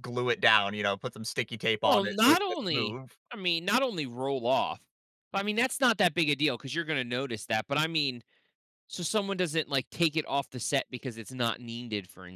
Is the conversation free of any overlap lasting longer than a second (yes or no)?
no